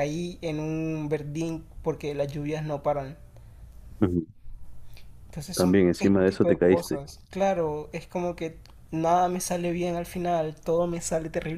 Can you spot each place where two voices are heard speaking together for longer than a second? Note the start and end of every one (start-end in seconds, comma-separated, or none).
5.5-7.0